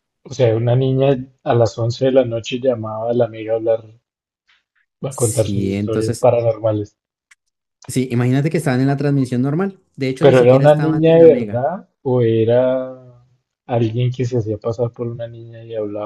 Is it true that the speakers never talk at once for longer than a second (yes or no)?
no